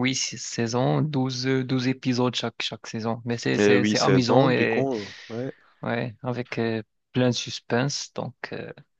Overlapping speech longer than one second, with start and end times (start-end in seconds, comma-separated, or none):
3.6-4.9